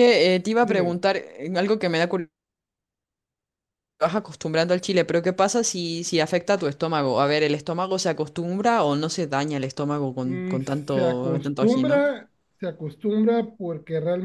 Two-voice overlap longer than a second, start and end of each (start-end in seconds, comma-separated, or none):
10.2-12.0